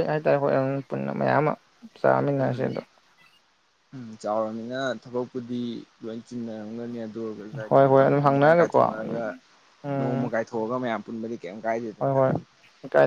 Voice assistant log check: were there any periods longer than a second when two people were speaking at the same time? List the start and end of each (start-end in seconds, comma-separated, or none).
7.7-9.2